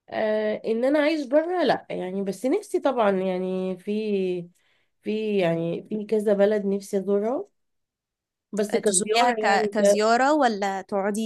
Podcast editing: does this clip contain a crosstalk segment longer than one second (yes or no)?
yes